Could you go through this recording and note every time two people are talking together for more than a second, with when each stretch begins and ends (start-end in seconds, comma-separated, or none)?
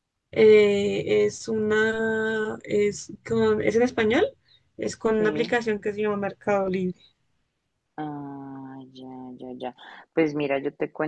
none